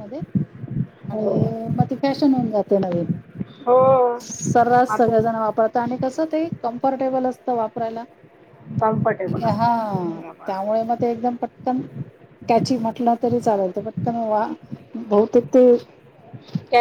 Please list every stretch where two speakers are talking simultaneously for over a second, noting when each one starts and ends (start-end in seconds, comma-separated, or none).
none